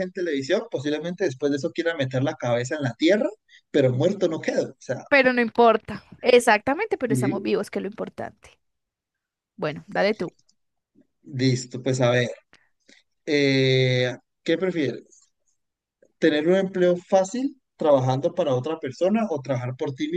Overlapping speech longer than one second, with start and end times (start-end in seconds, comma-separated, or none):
none